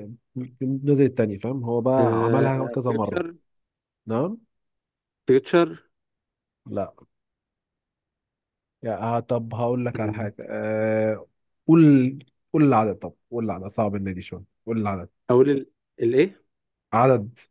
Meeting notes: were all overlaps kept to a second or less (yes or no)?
no